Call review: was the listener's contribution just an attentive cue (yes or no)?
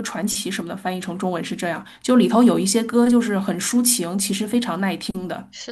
no